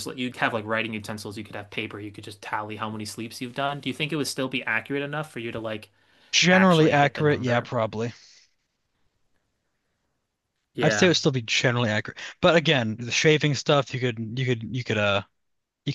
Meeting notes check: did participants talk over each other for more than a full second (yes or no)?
yes